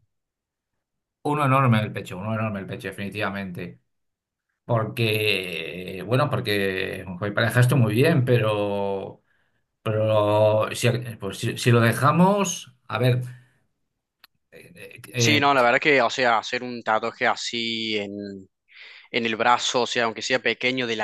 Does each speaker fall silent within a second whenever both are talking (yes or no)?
yes